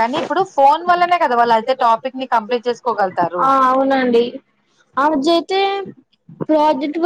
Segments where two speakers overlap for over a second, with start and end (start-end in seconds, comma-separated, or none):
none